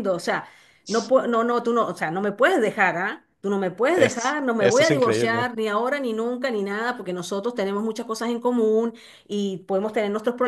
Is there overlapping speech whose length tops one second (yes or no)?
yes